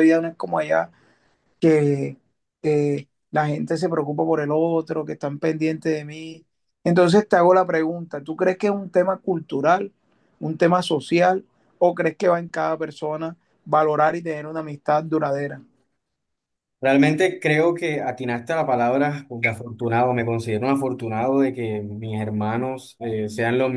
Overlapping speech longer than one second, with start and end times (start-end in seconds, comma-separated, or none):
none